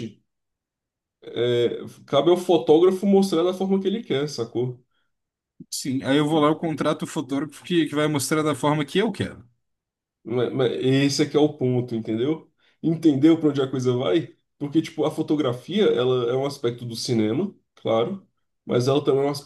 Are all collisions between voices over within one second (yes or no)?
yes